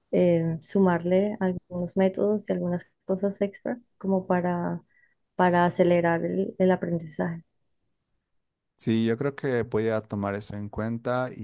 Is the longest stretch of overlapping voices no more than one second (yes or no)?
yes